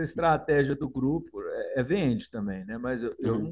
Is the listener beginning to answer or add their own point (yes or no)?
no